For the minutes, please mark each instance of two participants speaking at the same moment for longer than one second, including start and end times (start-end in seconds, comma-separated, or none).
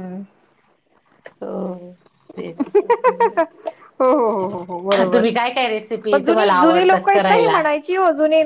6.1-7.6